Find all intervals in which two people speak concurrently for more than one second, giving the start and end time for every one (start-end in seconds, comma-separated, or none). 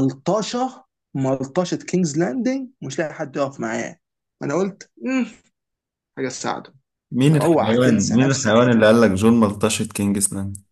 7.3-8.9